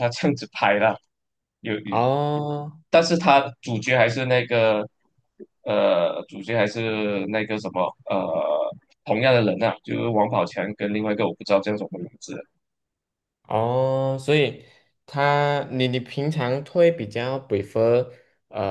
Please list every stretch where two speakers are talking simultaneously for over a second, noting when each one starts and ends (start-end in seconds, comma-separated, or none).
none